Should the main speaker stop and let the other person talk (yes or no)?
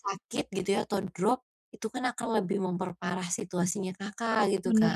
yes